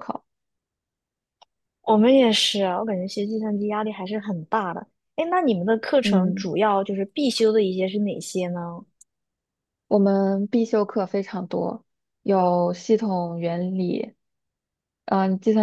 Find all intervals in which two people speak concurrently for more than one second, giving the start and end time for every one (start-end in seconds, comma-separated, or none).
none